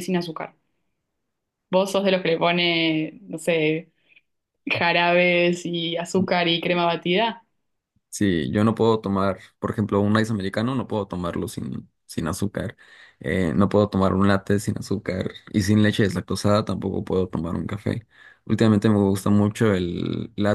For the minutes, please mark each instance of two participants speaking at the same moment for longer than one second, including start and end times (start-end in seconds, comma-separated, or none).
none